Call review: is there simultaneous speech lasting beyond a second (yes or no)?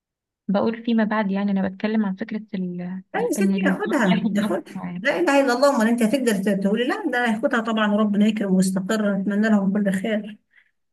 yes